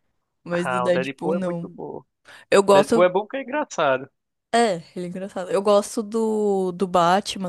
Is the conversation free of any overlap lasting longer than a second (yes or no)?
no